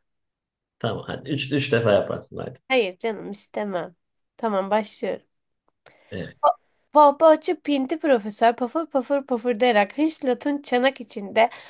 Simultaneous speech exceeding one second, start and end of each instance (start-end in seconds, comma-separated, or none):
none